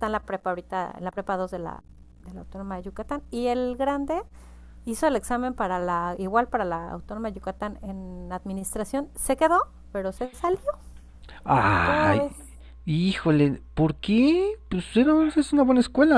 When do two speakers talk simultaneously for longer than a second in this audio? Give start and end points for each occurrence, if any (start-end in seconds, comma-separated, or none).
none